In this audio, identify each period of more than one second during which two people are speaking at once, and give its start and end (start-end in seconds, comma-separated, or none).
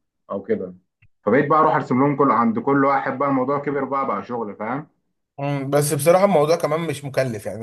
none